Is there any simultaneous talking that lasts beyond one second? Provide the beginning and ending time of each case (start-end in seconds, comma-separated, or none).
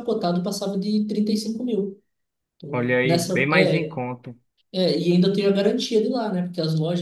2.7-4.0